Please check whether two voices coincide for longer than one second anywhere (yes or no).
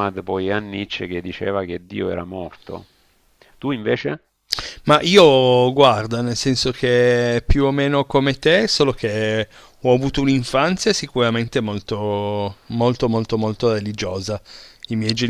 no